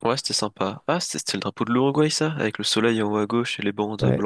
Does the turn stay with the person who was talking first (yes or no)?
no